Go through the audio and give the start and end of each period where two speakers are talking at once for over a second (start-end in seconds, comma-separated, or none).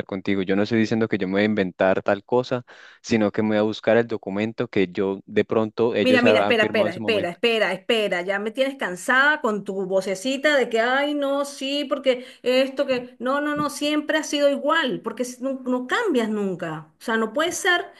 6.0-7.4